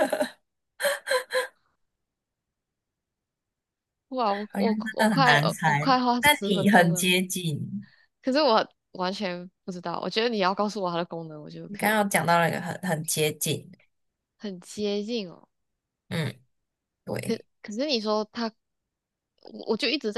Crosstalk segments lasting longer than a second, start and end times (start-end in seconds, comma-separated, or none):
4.5-7.1